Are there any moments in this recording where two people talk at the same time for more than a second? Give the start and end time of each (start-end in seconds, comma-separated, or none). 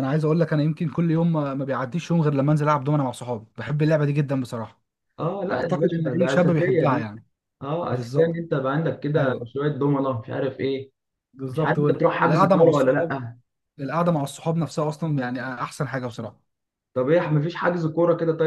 5.5-7.1, 11.5-13.1